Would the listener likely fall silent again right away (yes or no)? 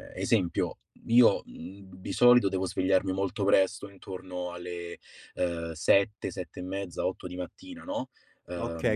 no